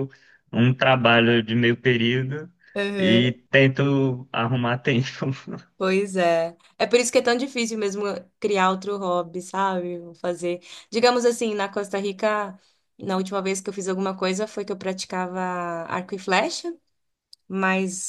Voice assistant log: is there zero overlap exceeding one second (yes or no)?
yes